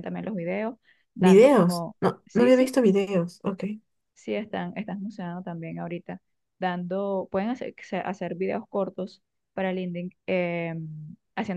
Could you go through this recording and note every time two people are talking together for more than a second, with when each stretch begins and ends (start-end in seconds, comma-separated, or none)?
1.2-2.7